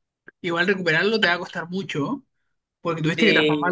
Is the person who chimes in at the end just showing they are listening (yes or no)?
yes